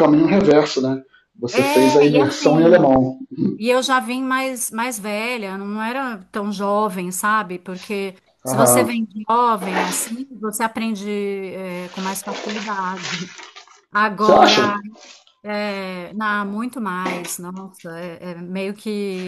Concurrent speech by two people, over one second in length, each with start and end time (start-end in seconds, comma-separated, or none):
1.5-3.0